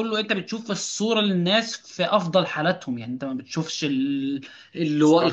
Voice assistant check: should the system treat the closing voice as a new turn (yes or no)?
no